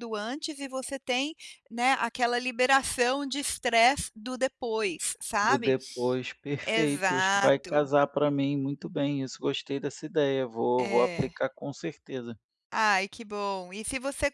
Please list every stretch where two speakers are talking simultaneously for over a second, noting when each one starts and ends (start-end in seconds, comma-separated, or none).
6.7-7.9